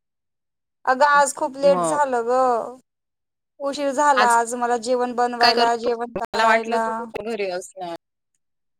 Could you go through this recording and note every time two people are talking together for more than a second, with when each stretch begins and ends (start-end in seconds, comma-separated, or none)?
none